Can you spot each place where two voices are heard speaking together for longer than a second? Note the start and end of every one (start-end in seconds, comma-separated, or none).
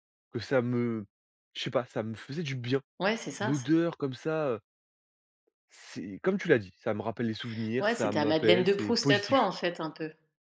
7.8-9.5